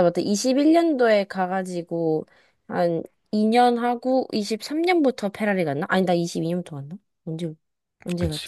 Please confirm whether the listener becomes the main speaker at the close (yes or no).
yes